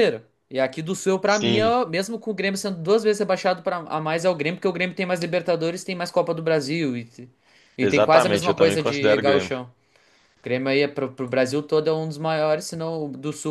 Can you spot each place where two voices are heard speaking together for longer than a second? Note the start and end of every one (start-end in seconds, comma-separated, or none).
7.8-9.5